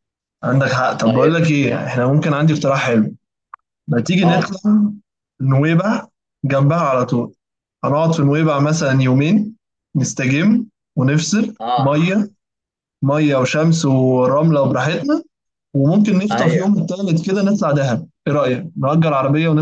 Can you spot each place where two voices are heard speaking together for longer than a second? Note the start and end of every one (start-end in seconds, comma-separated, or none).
none